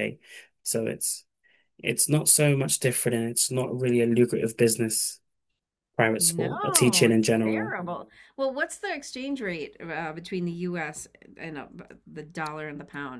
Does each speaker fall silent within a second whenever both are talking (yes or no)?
no